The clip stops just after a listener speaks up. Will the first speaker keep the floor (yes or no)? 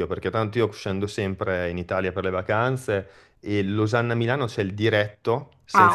yes